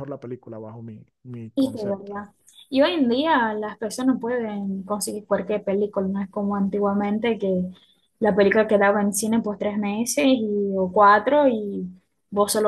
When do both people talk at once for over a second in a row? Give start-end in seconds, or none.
none